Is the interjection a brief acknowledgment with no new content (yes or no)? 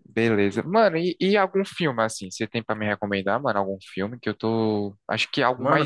no